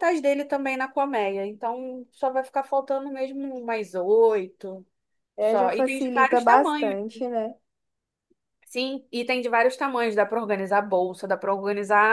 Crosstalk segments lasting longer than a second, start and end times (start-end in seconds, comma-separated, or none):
5.4-7.0